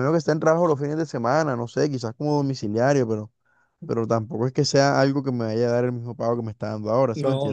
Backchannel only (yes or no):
no